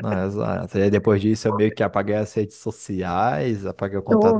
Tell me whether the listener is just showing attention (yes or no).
yes